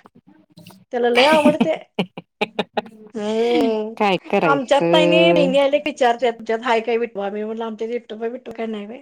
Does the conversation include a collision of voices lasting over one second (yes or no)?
yes